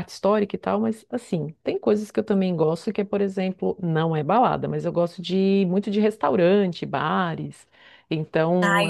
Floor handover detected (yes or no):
yes